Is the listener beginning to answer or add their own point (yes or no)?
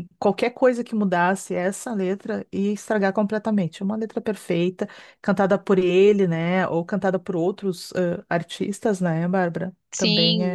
yes